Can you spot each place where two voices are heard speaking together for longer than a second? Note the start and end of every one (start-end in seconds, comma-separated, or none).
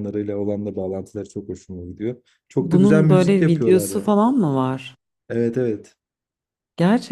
2.6-4.1